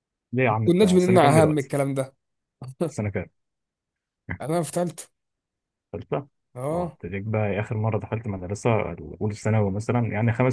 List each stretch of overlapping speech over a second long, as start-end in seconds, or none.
0.5-1.7